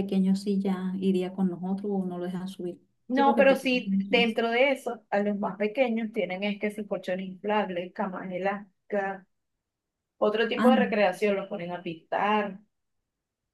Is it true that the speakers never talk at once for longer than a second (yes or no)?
no